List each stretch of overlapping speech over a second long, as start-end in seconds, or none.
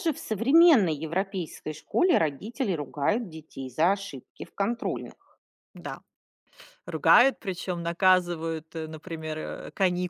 none